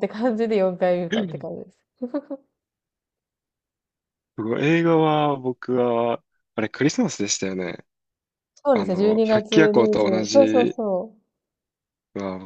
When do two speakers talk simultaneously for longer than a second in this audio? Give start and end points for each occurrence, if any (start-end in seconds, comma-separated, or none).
8.7-10.8